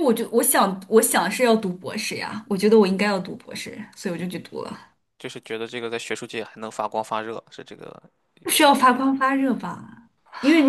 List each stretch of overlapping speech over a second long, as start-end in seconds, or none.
none